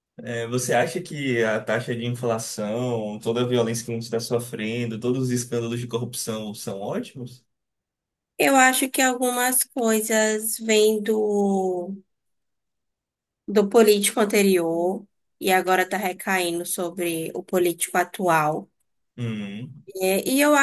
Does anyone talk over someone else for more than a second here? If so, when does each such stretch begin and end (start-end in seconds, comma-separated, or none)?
none